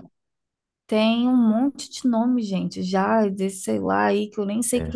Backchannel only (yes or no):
yes